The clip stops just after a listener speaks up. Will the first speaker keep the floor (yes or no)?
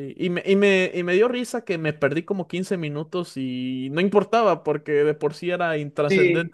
no